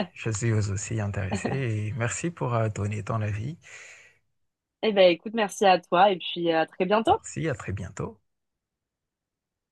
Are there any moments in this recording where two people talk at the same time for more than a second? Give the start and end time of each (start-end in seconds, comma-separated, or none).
none